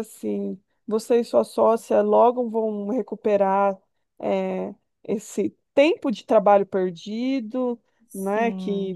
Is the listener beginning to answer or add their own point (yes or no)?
no